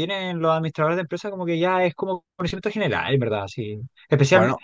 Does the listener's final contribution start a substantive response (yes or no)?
no